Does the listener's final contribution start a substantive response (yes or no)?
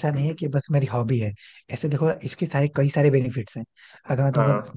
no